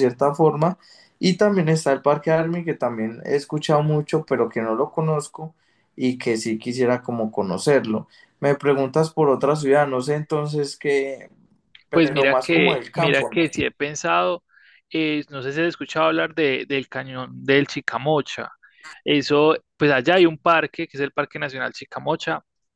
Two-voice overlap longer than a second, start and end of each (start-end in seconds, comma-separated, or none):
11.9-13.4